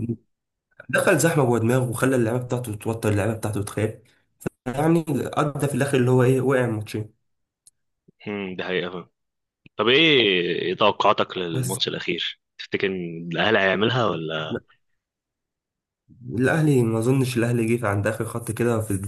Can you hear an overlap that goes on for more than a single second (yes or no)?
no